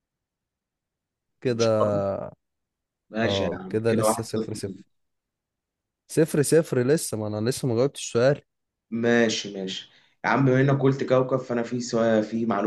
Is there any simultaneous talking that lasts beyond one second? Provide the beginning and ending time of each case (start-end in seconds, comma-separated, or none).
3.2-4.9